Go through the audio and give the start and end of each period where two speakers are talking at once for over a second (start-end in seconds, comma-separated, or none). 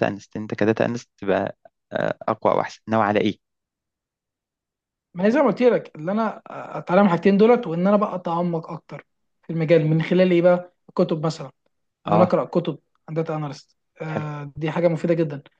none